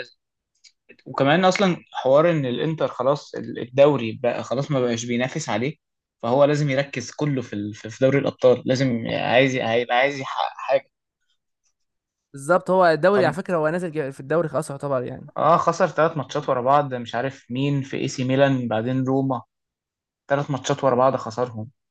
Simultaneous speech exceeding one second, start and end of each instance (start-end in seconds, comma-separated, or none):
none